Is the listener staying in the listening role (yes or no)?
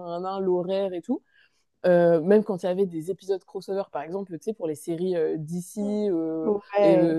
yes